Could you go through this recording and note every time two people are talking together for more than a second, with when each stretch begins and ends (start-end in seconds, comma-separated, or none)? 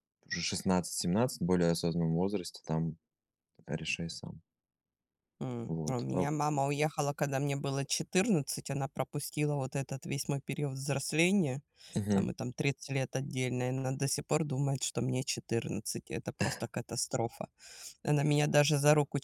none